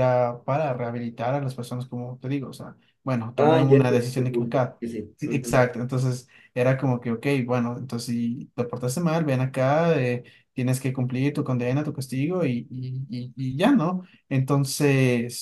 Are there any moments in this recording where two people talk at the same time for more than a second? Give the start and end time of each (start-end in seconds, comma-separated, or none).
3.4-4.8